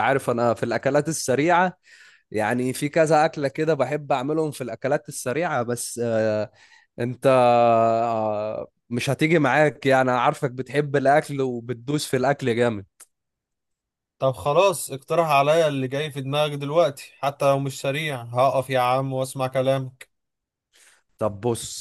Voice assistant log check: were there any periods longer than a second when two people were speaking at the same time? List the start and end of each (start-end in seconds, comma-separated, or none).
none